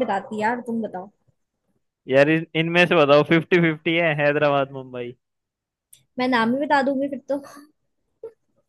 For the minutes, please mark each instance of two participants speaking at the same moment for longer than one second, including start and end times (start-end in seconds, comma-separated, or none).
none